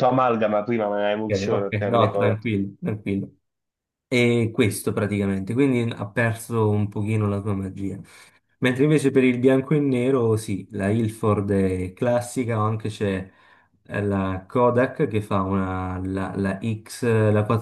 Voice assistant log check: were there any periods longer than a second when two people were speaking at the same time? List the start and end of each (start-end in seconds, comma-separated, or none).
1.2-2.5